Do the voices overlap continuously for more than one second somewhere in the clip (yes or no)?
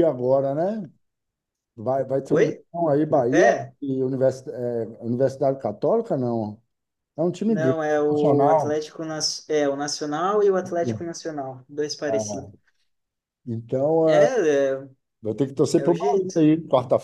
yes